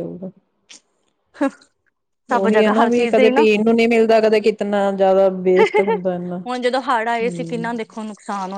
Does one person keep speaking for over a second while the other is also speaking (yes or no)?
yes